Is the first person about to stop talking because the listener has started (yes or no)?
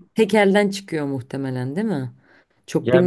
yes